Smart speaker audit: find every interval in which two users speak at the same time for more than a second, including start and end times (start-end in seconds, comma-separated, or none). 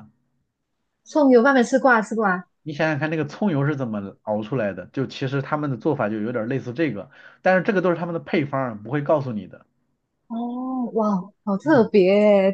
none